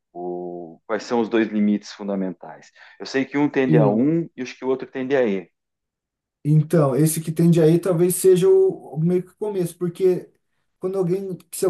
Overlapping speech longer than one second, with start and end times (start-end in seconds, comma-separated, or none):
none